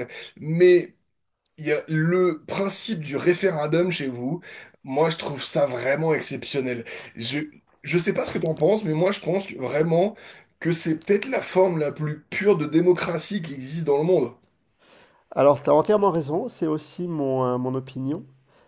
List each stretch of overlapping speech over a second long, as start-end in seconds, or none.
none